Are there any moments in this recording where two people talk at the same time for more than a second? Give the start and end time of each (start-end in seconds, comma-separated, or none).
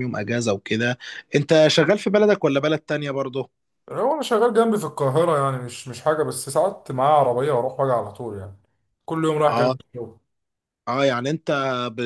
none